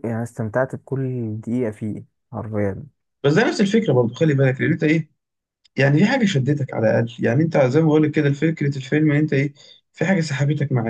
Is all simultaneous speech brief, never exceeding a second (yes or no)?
yes